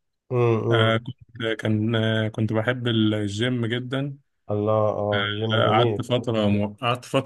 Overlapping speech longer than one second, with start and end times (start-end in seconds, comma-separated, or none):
none